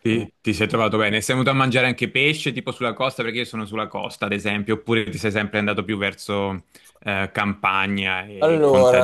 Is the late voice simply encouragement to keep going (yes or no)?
no